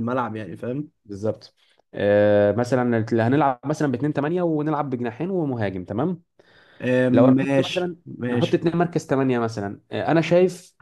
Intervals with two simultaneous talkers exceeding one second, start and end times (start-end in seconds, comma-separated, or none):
7.1-8.7